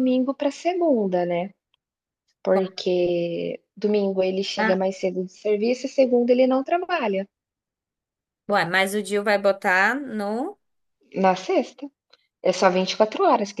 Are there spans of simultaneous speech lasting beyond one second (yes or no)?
no